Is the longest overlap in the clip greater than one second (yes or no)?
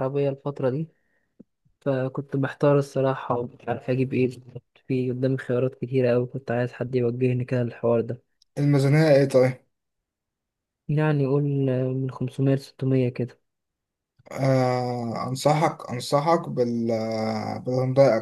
no